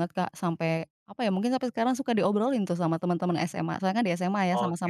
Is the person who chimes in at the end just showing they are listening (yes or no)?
no